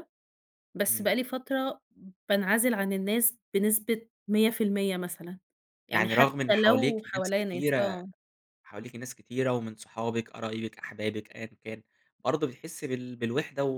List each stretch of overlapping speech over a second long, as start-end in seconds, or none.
5.9-8.0